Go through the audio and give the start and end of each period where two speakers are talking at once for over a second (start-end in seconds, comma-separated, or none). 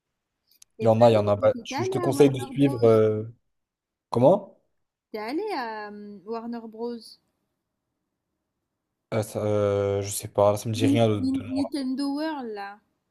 0.8-2.7